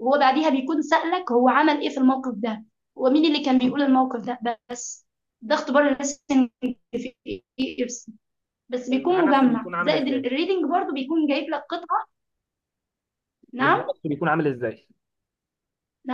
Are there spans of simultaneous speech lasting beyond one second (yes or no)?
yes